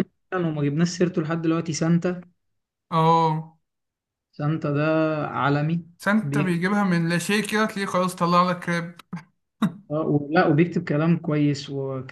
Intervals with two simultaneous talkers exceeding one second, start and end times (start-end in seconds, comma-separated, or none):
none